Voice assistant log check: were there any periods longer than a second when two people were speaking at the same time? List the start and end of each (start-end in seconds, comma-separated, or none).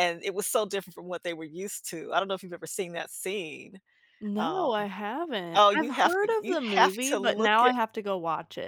5.6-7.7